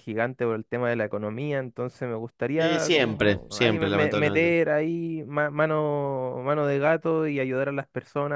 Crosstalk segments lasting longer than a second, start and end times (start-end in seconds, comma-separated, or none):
2.6-4.5